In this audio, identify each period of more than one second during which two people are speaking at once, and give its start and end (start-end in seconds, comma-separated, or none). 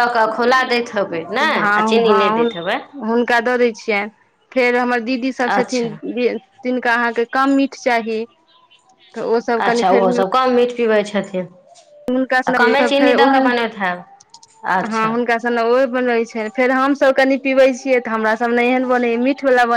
none